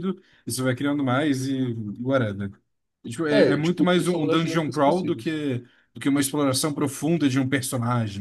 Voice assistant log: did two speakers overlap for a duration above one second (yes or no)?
yes